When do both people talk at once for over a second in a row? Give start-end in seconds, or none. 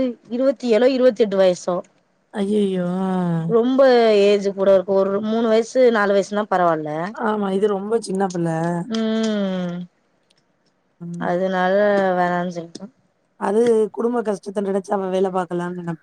none